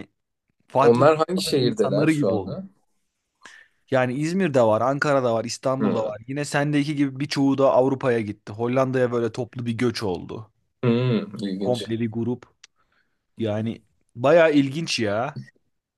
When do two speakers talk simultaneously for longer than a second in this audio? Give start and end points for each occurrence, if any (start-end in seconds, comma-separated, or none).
0.8-2.6